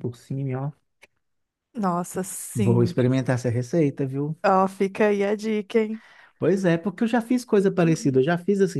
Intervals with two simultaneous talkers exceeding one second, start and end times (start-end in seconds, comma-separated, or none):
none